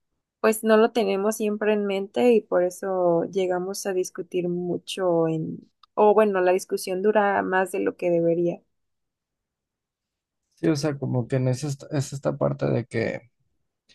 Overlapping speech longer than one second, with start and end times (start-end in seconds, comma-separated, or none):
none